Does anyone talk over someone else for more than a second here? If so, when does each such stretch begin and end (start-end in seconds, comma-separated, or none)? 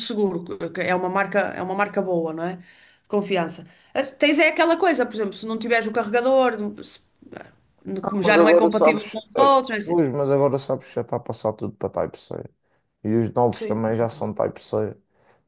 8.2-10.0